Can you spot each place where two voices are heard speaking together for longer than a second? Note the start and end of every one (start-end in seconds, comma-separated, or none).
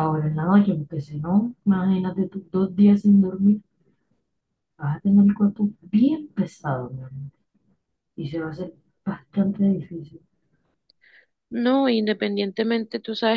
none